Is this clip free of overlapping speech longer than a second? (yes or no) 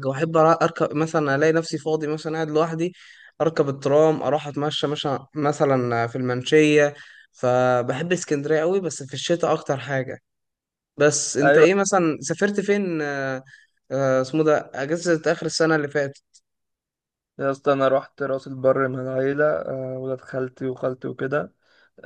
yes